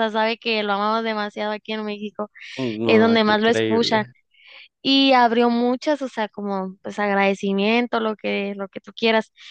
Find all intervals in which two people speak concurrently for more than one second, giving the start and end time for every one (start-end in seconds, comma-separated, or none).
2.8-4.0